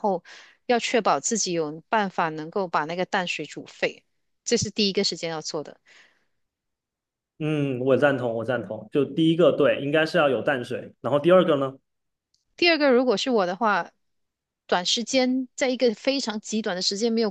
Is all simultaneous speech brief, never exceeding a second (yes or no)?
yes